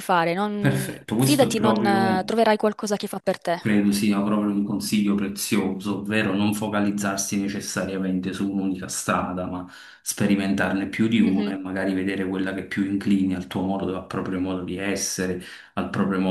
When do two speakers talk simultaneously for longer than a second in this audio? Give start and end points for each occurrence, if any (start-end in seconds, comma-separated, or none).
0.6-2.3